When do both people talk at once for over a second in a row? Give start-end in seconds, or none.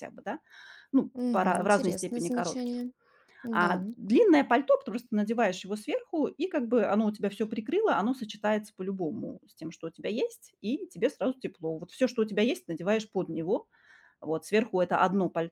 1.1-2.8